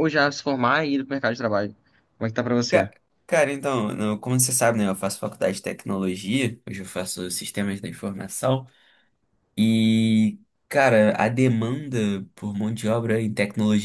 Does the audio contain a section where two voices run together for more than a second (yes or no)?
no